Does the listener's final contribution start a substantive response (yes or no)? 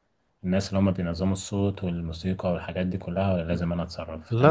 no